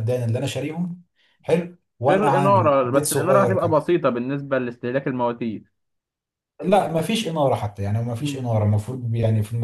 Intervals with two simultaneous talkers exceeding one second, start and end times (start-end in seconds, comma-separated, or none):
2.1-3.8